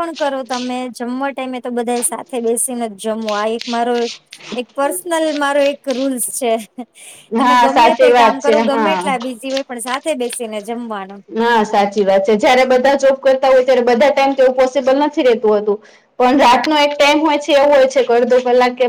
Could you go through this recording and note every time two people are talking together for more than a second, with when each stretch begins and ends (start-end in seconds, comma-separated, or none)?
7.4-9.1